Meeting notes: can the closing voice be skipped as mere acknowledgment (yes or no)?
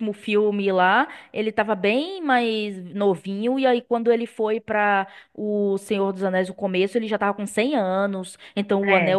yes